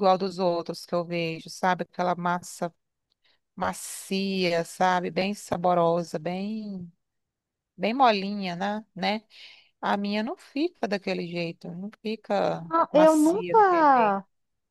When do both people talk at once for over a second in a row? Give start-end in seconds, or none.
12.7-14.2